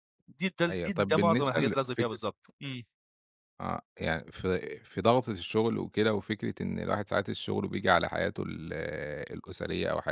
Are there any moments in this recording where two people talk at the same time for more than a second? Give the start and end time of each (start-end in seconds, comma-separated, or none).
0.7-2.2